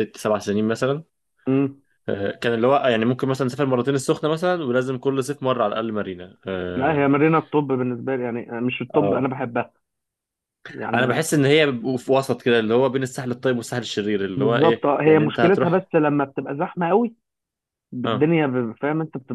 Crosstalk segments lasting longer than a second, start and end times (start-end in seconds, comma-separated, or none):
14.3-15.9